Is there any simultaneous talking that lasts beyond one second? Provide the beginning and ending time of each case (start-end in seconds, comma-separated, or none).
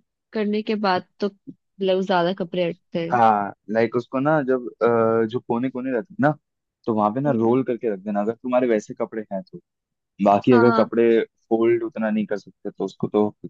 none